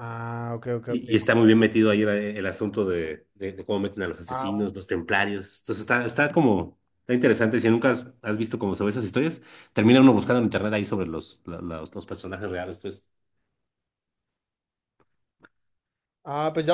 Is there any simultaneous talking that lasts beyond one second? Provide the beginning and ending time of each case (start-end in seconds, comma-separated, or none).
none